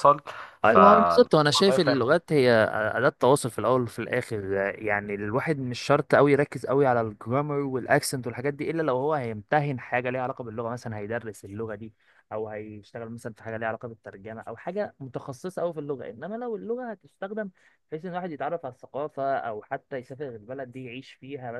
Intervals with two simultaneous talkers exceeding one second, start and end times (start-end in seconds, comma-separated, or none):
0.6-2.1